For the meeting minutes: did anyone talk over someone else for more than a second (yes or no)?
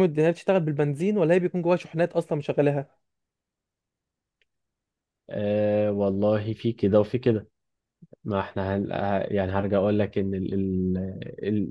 no